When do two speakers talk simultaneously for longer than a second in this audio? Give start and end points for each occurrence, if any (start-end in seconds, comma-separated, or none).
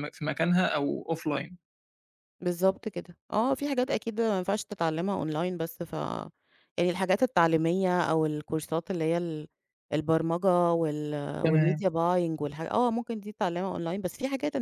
none